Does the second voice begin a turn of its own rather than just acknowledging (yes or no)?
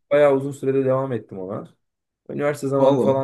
no